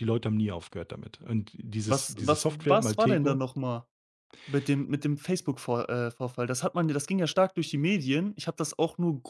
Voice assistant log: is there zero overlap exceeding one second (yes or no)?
no